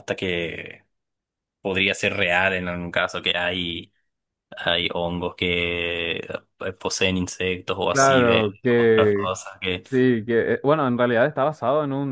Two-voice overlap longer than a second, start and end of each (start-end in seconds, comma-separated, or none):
7.9-9.3